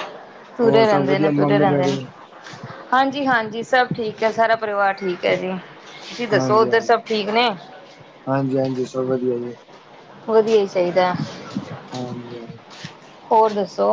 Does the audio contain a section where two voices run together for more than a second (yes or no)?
yes